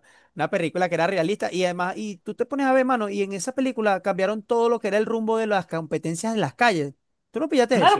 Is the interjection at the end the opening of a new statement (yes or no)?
yes